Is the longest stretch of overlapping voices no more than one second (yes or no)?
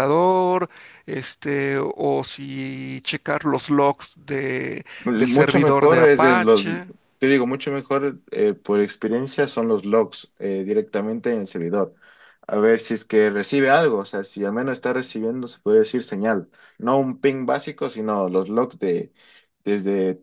no